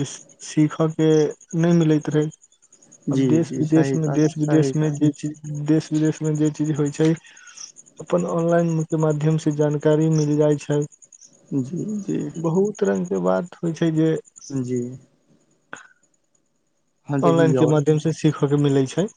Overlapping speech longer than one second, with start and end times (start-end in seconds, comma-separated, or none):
3.2-5.2